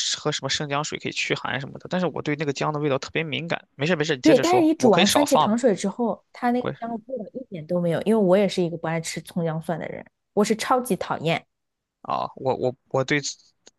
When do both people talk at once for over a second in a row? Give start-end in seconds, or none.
4.2-5.6